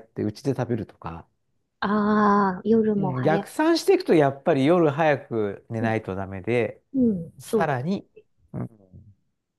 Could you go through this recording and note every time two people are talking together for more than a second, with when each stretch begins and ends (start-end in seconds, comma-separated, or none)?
none